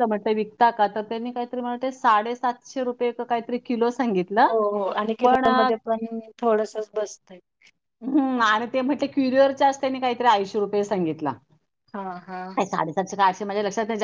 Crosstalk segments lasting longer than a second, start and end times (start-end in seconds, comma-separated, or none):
none